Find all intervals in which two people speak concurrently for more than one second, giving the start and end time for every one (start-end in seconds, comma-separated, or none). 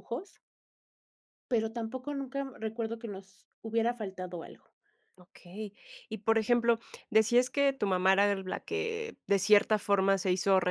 none